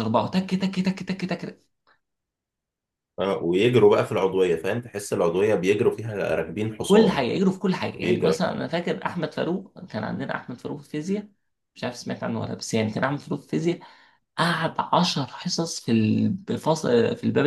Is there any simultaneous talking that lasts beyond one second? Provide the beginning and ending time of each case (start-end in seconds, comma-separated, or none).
none